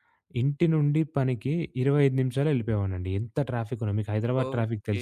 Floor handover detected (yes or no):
yes